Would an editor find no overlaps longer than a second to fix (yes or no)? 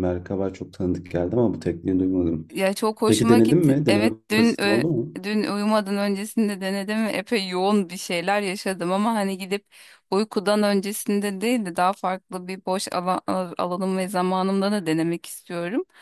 no